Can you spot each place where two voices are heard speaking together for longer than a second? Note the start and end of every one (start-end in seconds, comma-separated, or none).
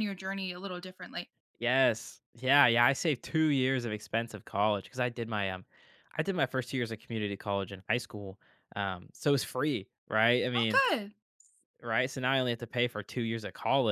none